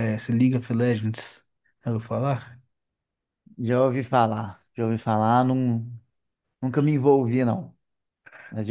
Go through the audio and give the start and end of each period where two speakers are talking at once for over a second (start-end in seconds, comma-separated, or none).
none